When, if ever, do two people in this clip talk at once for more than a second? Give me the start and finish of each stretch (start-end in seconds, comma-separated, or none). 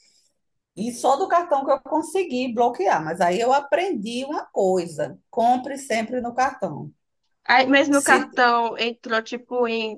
none